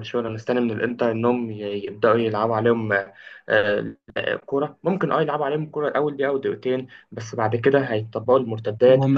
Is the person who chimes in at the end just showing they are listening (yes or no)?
no